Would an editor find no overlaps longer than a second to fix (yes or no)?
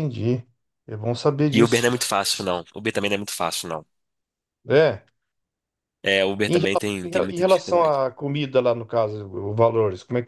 no